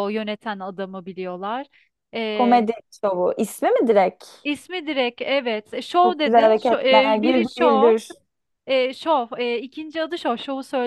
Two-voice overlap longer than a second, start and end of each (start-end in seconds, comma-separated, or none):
6.0-7.9